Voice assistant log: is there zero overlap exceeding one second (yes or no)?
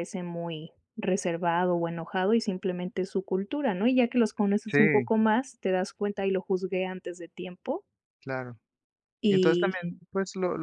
yes